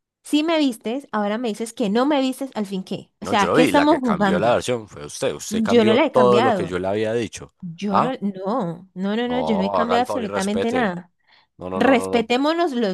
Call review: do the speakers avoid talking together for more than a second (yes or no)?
no